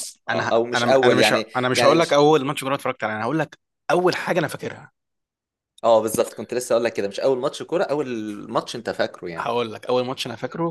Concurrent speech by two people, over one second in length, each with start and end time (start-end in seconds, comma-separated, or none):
0.5-2.2